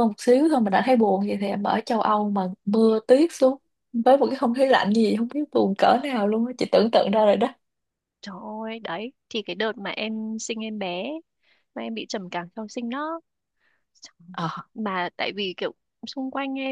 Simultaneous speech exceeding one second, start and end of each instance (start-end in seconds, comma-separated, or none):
none